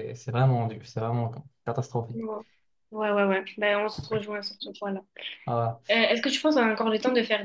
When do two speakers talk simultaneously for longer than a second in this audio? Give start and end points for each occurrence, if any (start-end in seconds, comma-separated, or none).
none